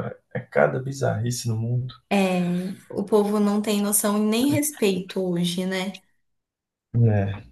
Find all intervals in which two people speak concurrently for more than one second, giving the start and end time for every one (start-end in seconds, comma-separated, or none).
none